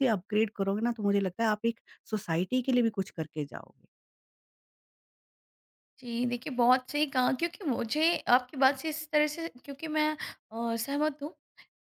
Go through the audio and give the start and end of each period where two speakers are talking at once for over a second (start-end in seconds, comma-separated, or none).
none